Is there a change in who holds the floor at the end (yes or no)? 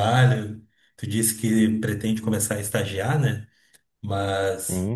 no